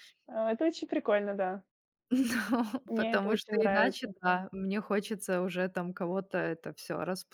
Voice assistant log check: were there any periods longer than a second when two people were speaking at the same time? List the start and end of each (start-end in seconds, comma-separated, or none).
2.9-4.2